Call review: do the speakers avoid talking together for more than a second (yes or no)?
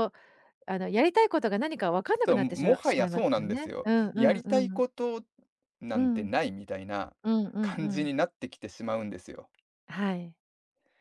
no